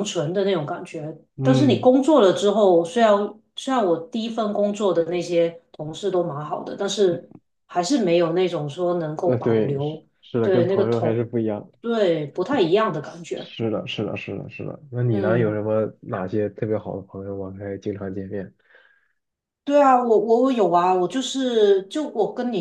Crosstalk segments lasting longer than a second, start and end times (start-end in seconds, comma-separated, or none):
9.2-11.3